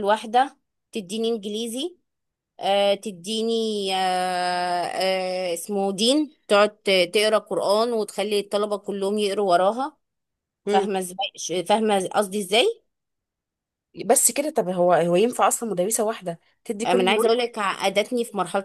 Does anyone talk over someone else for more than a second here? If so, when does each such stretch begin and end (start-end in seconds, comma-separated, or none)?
none